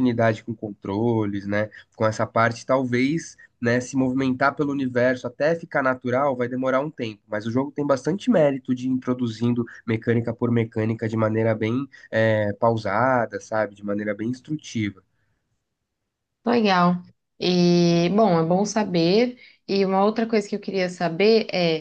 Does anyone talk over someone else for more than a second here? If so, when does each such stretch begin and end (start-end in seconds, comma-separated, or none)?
none